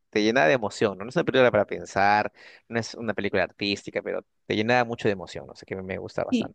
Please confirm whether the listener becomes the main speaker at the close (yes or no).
yes